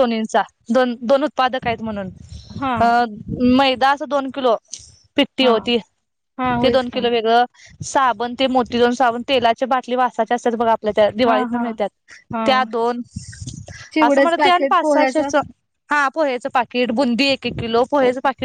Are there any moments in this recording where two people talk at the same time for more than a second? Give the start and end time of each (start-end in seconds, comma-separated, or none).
14.1-15.3